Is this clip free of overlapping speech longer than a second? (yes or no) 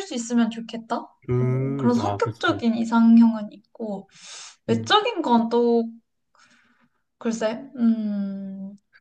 no